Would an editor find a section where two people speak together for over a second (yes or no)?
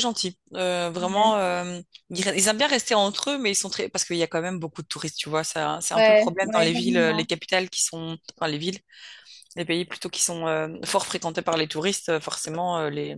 yes